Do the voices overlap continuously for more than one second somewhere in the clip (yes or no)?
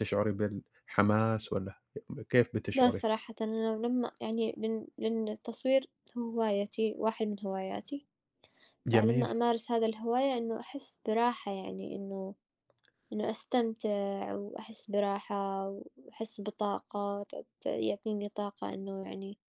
no